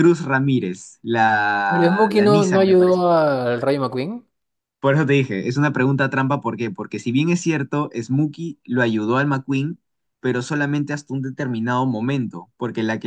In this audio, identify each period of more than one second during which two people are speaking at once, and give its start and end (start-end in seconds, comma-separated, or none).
1.7-3.0